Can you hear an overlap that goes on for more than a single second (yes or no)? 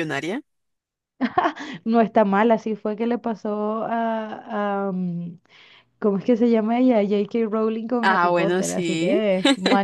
yes